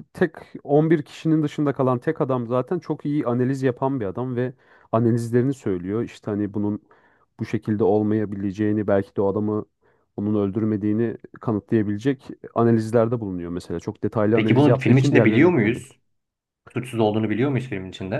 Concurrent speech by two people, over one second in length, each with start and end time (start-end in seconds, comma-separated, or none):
14.3-15.8